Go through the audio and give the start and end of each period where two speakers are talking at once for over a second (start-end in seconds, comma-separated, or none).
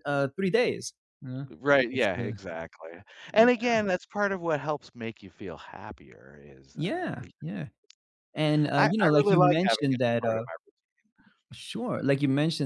8.7-10.4